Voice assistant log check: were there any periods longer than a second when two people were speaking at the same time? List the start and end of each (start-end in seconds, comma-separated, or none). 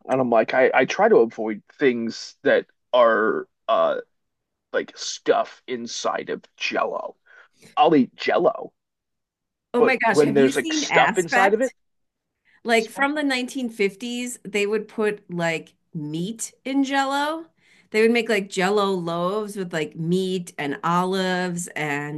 9.8-11.7